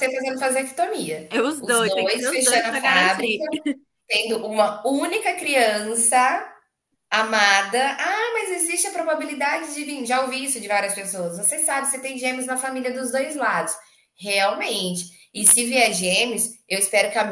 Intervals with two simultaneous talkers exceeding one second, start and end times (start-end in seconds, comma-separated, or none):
1.3-3.4